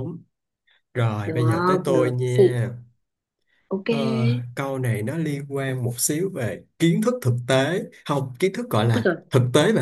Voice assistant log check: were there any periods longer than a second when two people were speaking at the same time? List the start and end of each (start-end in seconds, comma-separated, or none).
1.2-2.6